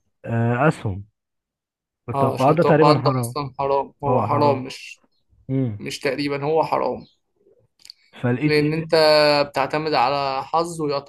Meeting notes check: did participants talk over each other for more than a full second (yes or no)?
yes